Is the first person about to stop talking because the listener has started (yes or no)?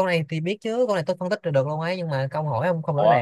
yes